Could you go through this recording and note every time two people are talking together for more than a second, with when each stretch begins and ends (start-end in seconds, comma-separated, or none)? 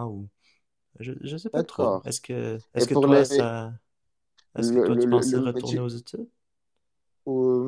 4.6-5.8